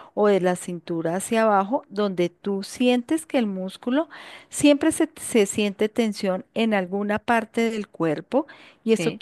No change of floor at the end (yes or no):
yes